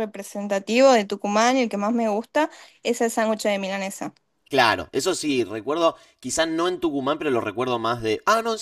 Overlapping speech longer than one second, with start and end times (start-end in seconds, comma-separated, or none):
none